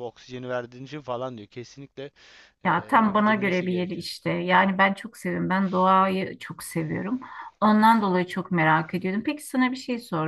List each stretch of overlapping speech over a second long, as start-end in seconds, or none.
2.6-4.1